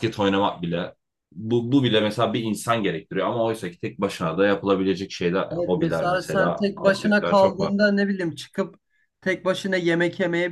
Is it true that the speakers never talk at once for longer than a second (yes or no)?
no